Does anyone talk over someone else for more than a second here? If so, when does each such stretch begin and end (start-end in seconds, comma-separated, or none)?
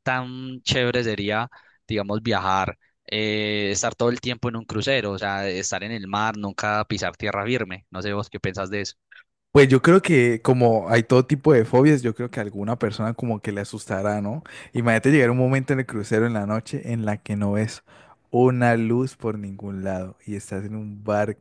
none